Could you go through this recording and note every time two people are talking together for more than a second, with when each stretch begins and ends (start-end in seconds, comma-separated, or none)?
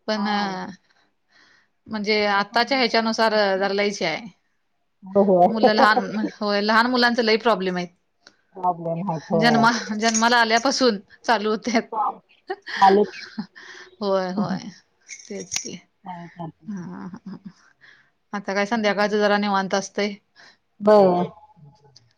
2.1-3.7